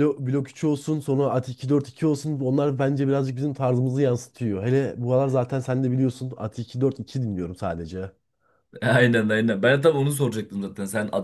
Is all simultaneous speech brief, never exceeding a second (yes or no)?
yes